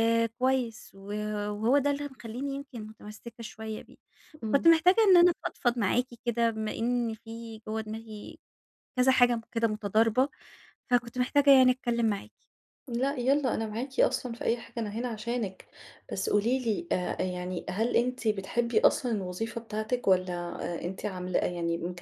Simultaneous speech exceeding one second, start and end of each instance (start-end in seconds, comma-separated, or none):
none